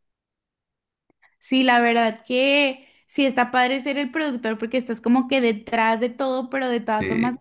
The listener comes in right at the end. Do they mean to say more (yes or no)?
no